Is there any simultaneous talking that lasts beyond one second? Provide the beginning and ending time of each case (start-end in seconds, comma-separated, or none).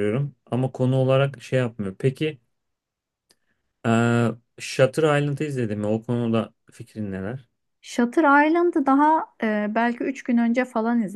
none